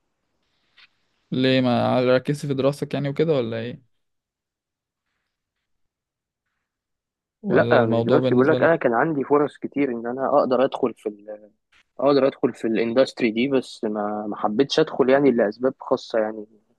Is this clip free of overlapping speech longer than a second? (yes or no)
no